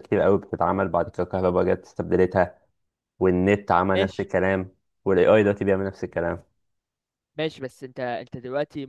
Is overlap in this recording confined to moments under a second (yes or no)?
yes